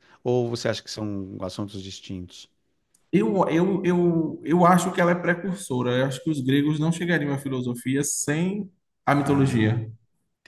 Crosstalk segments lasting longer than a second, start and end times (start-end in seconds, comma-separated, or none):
none